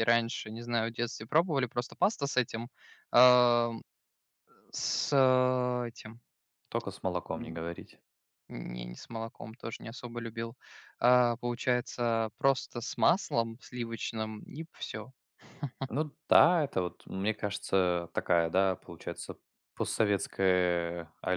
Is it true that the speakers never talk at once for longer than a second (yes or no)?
yes